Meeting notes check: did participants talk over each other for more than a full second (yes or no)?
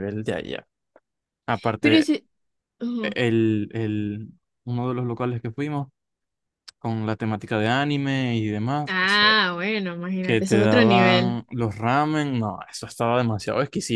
yes